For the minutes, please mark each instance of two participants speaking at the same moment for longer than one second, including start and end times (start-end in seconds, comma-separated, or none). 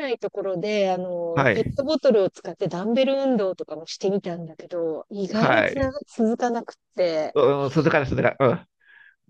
none